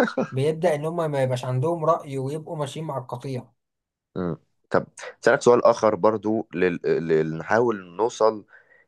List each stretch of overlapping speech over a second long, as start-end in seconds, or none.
none